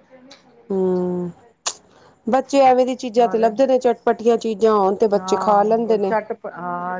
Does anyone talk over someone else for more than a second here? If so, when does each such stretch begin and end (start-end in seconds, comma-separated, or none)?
none